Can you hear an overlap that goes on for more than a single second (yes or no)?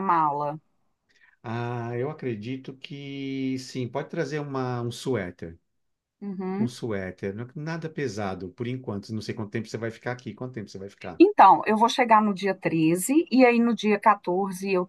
no